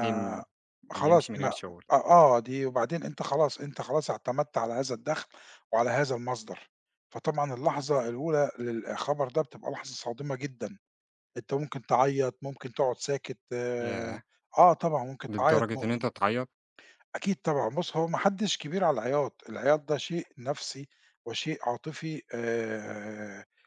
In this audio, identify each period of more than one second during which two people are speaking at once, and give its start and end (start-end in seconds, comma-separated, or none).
none